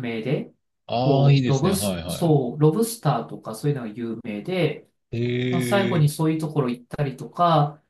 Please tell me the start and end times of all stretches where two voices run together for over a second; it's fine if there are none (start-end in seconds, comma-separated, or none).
0.9-2.4